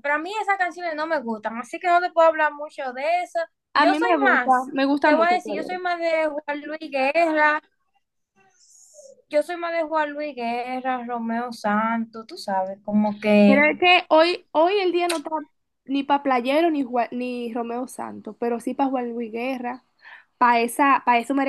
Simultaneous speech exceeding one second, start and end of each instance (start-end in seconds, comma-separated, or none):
3.8-5.8